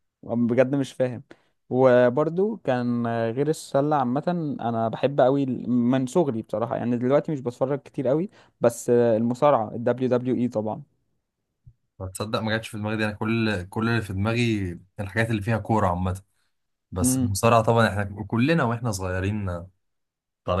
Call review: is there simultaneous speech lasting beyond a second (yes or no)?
no